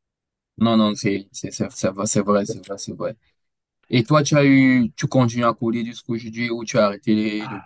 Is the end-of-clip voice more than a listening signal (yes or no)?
yes